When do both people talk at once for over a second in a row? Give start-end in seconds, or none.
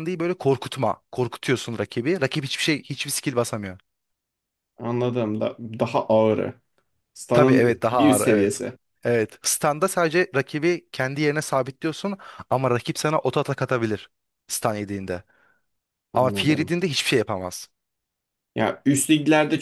7.3-8.6